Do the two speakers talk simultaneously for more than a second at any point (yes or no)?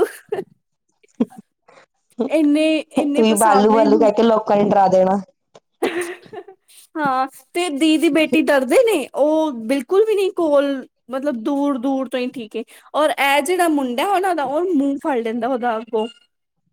yes